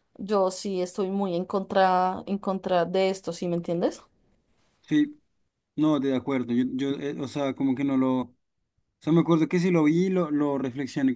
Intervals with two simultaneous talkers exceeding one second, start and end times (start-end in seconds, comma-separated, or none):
none